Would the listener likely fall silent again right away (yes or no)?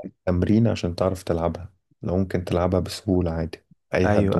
no